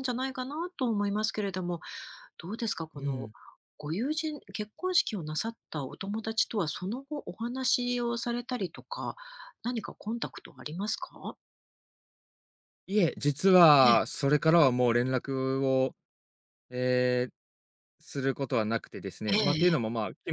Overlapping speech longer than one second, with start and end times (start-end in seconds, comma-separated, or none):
none